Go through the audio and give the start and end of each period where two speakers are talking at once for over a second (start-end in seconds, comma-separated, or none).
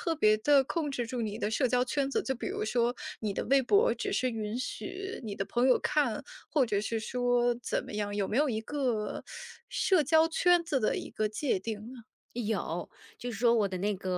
none